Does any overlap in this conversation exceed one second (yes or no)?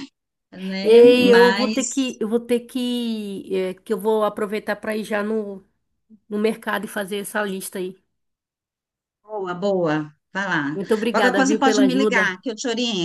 yes